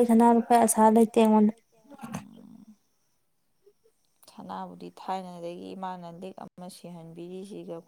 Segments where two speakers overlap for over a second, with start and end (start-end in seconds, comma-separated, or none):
none